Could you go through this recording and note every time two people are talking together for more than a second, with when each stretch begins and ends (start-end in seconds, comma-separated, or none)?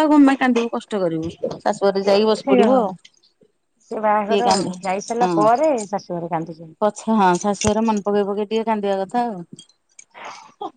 none